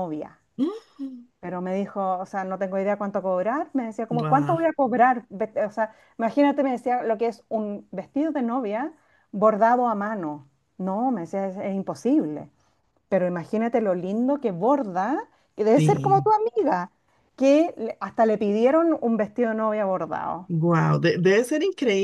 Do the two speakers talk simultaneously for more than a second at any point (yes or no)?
no